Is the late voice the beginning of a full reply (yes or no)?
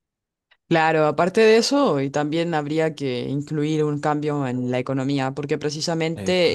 no